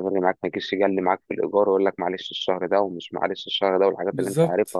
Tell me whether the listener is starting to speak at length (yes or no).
no